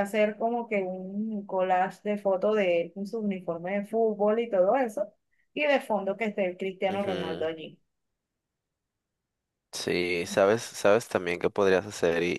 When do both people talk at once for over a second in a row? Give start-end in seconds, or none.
none